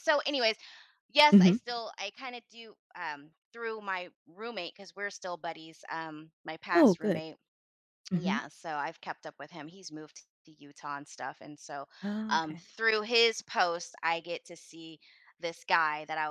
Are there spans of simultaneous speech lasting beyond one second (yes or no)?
no